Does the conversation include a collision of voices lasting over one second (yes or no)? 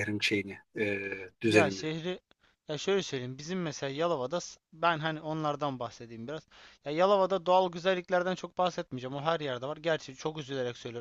no